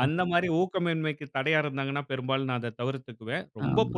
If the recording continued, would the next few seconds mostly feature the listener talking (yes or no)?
no